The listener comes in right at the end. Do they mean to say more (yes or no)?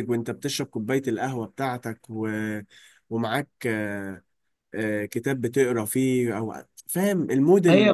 yes